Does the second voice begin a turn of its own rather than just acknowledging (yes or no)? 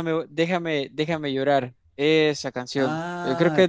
yes